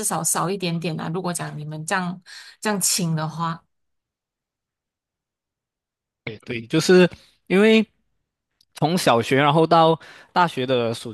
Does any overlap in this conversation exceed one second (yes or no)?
no